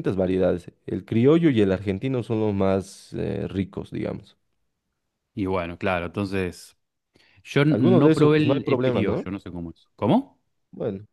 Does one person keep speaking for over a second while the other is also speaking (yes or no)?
yes